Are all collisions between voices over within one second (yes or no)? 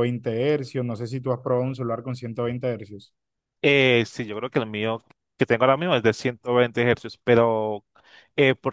yes